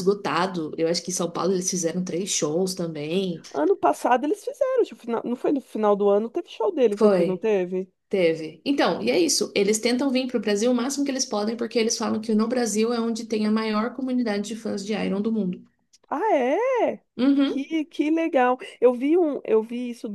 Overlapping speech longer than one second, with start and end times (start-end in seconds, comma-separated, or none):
none